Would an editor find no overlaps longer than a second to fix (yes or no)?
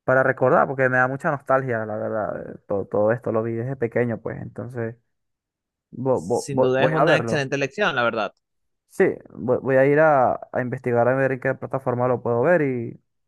no